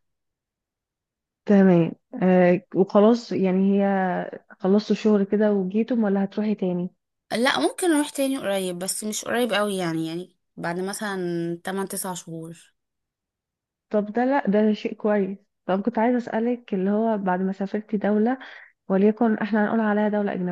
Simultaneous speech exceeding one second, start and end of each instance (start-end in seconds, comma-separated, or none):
none